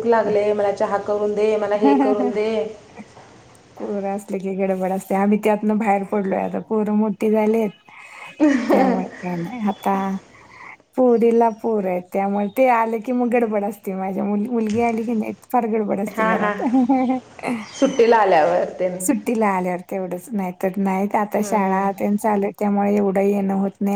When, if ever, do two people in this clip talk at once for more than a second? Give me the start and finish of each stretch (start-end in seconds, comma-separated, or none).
none